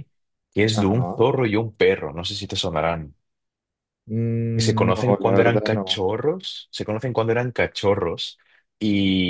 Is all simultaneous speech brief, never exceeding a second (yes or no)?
no